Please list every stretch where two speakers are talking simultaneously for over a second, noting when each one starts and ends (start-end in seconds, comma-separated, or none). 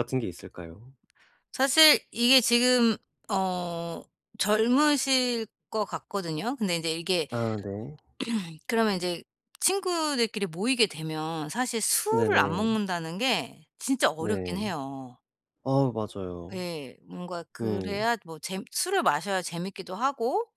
none